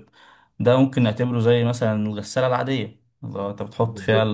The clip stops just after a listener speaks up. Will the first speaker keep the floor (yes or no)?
yes